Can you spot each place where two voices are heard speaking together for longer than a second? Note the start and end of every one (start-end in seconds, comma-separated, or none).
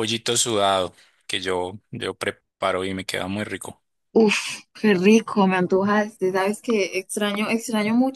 none